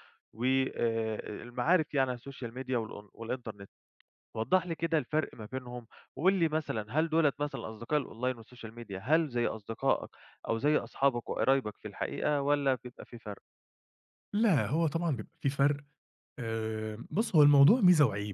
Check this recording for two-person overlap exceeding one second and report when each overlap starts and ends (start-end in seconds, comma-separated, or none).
none